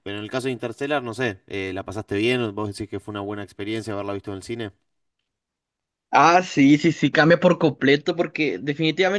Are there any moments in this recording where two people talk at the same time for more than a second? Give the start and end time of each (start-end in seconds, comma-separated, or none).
none